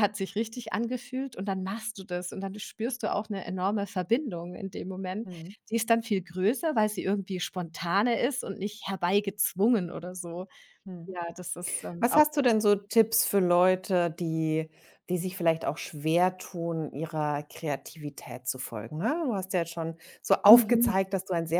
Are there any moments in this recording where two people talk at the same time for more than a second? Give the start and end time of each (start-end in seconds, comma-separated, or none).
none